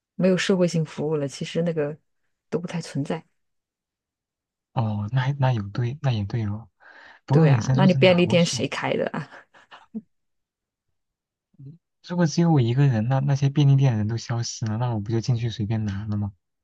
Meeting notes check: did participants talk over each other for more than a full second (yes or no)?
yes